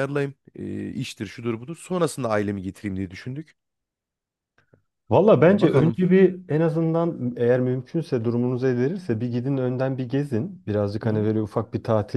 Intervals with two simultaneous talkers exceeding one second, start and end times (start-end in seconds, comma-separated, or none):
none